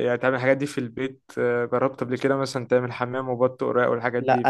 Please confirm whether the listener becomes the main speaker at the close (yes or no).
yes